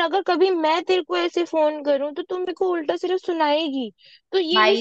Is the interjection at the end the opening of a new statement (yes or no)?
no